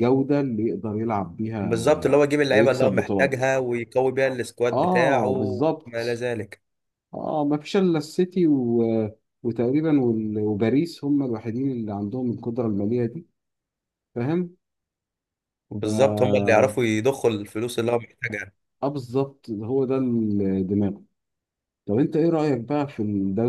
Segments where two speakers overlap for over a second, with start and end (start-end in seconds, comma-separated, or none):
1.6-3.4, 4.7-6.2